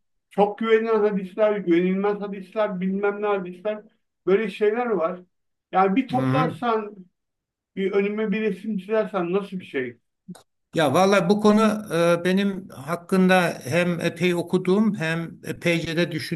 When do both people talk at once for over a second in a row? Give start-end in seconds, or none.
none